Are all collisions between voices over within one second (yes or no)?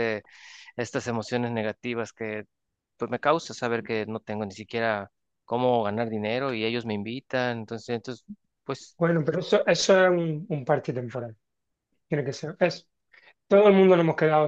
yes